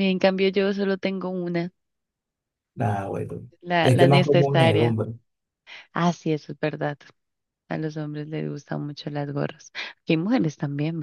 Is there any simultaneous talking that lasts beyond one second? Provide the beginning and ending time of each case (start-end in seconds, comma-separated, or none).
3.6-5.0